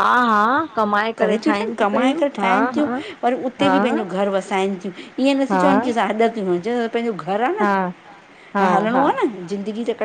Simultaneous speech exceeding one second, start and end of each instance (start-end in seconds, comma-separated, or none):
0.7-2.9